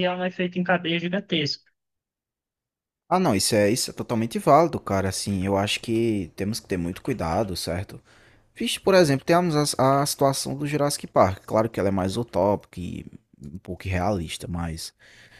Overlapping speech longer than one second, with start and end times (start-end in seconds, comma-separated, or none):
none